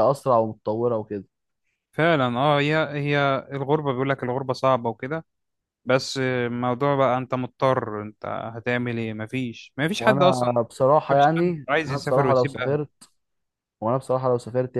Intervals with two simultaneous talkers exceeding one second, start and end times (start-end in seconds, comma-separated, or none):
11.1-12.8